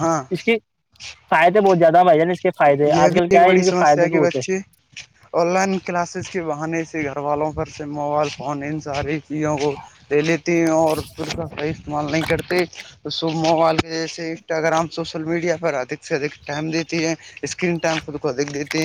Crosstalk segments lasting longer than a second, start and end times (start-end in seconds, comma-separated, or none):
3.0-4.4